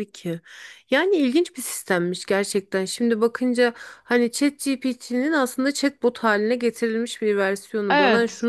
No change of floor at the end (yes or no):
yes